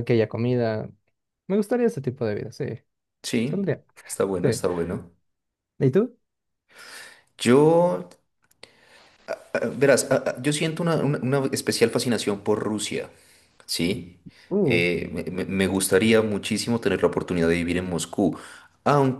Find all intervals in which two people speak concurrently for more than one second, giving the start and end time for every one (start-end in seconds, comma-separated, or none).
none